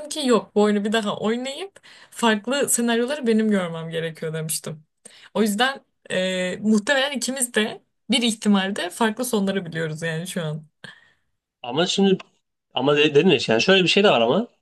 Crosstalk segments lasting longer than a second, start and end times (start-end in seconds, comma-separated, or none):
none